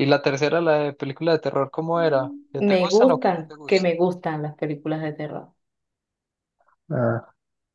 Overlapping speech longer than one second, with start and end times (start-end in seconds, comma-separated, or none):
2.5-3.9